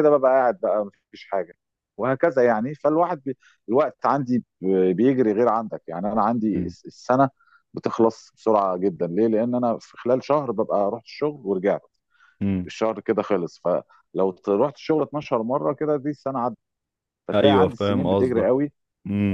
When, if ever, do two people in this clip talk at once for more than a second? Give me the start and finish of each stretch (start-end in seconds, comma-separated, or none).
17.3-18.6